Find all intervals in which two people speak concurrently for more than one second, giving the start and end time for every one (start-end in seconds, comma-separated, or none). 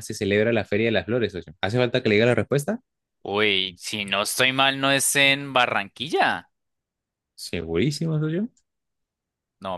none